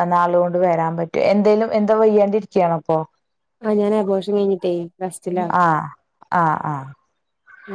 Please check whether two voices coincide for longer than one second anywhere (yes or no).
no